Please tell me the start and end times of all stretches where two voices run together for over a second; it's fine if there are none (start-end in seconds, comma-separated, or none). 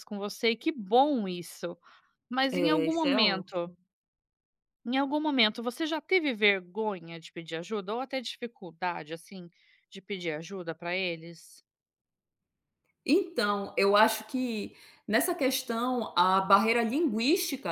2.5-3.7